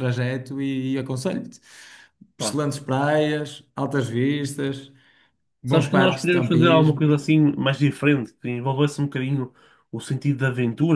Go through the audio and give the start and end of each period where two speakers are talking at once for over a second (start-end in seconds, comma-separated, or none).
5.7-7.1